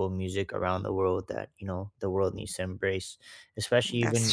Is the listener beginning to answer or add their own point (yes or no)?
no